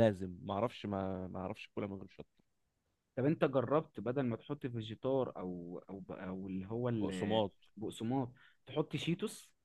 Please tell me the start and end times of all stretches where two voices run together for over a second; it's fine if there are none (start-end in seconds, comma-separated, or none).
none